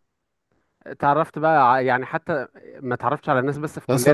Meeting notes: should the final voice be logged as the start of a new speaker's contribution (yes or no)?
yes